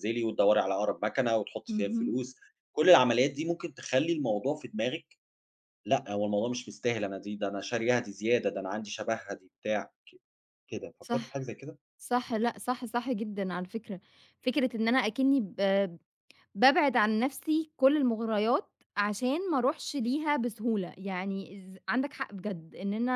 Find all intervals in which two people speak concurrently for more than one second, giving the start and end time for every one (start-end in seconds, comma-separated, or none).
none